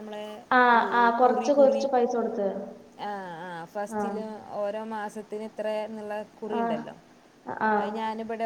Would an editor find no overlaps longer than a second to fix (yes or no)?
yes